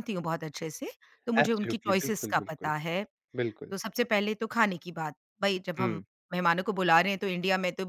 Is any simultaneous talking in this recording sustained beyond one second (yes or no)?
yes